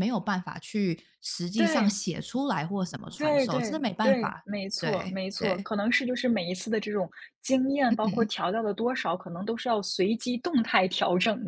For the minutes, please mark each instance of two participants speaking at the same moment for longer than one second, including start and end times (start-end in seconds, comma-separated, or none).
3.1-5.7